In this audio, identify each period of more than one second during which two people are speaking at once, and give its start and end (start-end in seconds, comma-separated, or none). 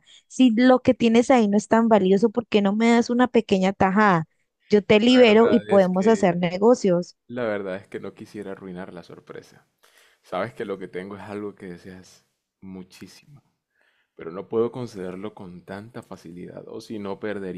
5.1-6.4